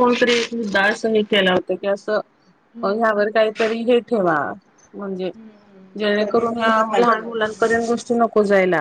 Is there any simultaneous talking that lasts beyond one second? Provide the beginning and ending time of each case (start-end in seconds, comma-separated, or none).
6.0-8.2